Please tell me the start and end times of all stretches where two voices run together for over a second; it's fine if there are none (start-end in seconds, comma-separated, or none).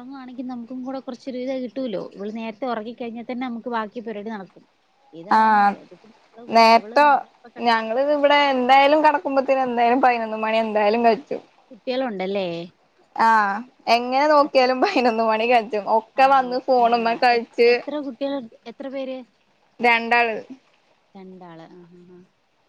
none